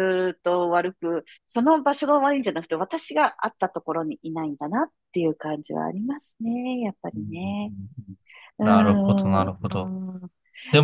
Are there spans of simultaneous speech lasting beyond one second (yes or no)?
yes